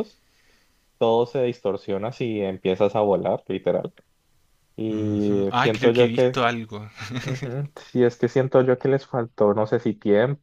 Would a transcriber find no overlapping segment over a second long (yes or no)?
no